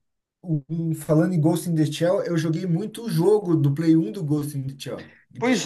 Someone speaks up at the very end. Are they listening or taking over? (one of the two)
taking over